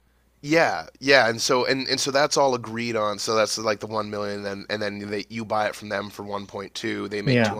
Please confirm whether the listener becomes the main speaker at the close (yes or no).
no